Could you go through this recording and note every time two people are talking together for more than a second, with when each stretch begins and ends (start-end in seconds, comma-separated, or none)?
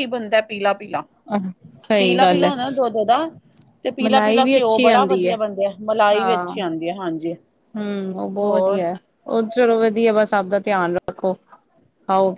4.0-5.3